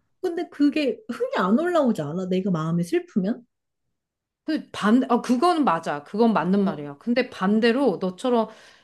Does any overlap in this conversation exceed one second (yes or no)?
no